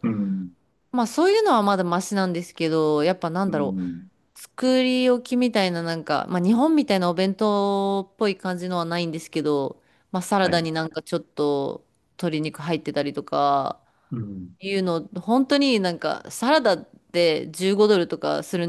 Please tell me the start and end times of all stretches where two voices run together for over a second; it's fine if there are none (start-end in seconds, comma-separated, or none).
none